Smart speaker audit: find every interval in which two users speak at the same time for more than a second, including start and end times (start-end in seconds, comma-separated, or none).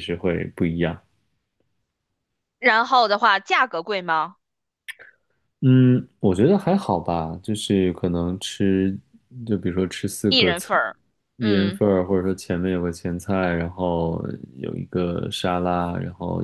none